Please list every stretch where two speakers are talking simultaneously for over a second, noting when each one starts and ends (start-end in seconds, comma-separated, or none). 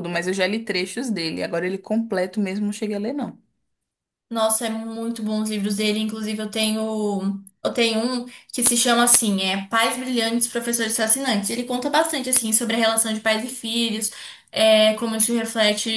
none